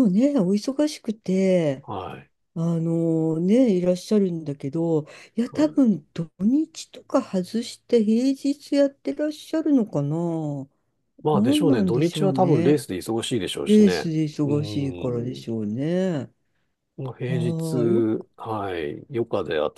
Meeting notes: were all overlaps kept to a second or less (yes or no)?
no